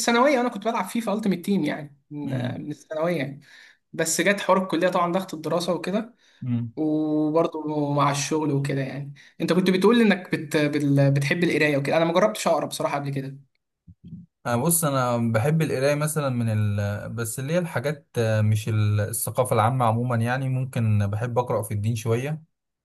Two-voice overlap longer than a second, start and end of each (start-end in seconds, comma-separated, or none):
none